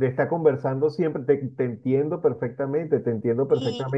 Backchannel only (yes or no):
no